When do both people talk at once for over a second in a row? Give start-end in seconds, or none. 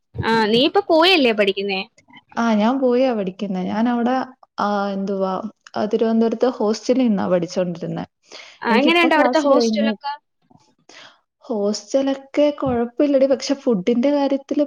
8.7-9.9